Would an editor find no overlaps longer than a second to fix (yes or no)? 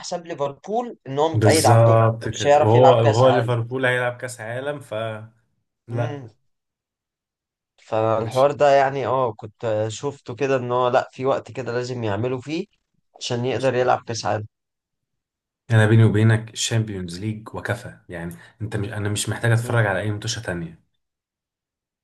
no